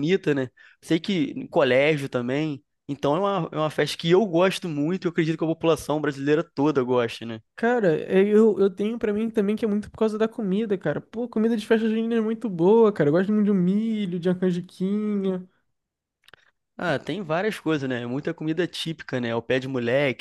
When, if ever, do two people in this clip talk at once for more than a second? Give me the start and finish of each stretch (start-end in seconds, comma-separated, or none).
none